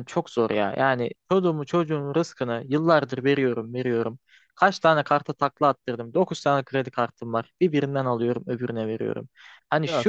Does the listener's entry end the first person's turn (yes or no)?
no